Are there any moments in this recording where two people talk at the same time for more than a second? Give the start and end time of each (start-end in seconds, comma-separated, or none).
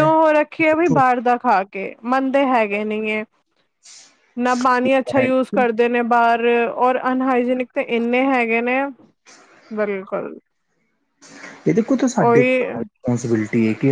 none